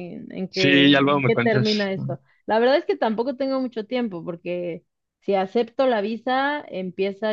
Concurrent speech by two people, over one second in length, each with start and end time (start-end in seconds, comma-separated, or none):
0.5-2.2